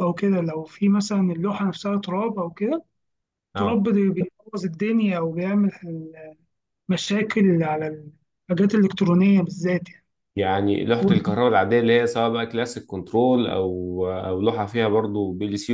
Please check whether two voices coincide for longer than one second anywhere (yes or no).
no